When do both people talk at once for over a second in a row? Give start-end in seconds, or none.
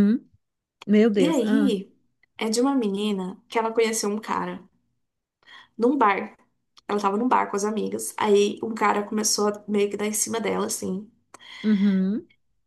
none